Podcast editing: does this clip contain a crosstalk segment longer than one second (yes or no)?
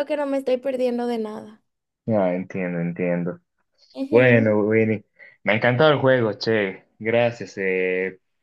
no